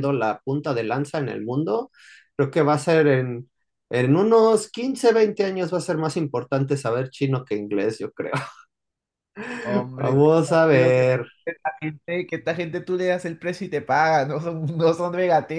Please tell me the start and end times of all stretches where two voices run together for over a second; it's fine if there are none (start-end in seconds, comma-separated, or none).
10.0-11.3